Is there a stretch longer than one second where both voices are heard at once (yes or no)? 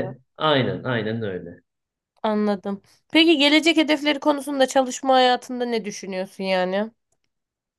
no